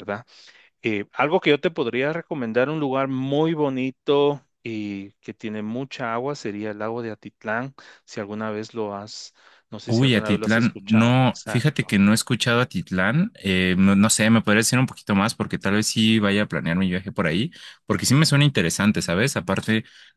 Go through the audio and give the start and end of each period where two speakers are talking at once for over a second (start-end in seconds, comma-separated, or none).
9.9-12.0